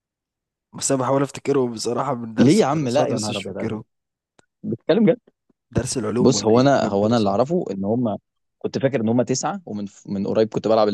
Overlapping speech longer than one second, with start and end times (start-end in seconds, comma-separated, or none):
2.4-3.8, 6.2-7.5